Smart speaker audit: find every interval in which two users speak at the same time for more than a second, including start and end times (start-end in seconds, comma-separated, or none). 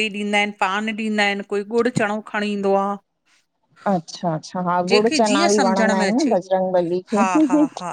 4.9-6.3